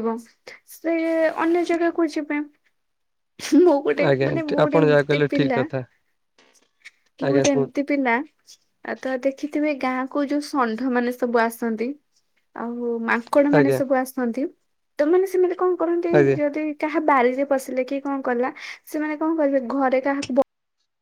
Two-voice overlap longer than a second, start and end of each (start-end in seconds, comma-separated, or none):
3.9-5.6